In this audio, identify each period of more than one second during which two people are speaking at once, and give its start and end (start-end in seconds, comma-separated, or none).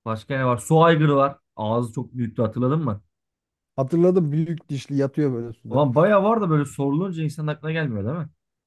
none